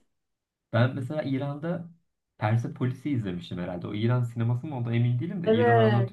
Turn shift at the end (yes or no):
yes